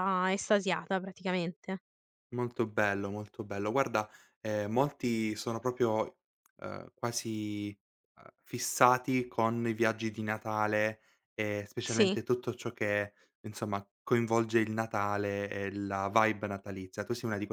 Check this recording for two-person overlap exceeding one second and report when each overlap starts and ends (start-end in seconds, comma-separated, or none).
none